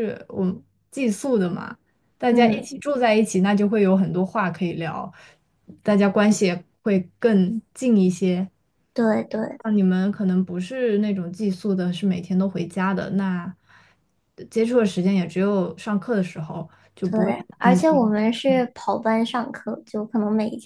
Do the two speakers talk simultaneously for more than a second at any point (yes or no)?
yes